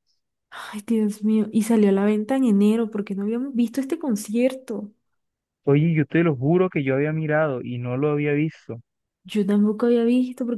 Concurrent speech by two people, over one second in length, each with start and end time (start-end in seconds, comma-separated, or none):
none